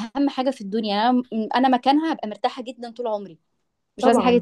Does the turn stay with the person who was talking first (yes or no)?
no